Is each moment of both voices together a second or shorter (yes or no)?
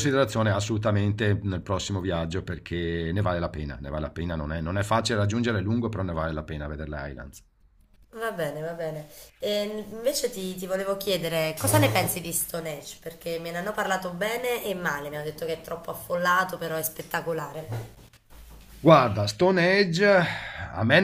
yes